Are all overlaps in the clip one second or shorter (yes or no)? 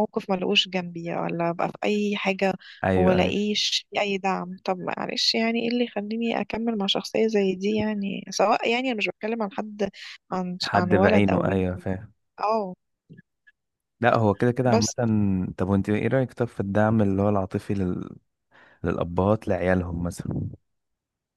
no